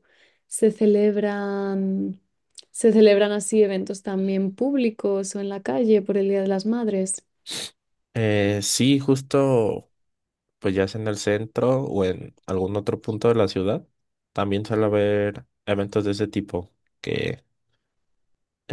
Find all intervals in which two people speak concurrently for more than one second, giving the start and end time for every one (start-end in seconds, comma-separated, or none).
none